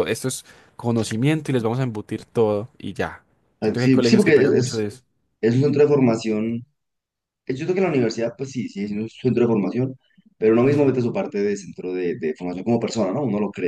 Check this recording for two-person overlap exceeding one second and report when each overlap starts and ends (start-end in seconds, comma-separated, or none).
3.6-4.9